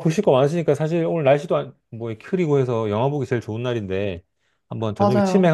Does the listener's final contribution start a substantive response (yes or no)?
no